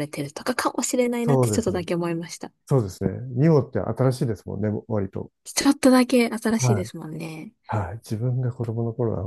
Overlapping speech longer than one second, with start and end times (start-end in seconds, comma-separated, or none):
none